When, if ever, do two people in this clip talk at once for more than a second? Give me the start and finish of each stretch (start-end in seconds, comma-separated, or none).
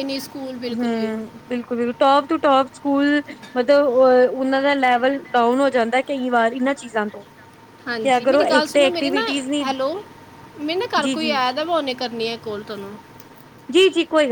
8.0-9.3